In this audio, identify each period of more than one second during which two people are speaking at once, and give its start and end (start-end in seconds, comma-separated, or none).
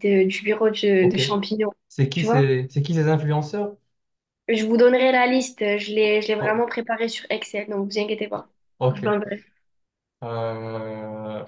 none